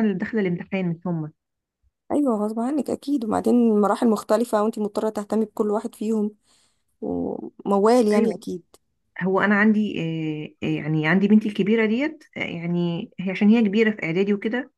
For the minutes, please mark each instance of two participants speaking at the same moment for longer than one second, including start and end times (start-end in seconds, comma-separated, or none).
none